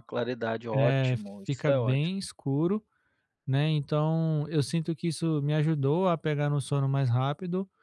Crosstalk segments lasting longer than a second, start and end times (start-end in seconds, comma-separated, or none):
0.7-2.2